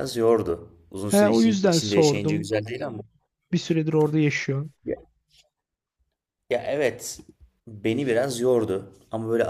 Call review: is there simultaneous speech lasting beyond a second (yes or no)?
yes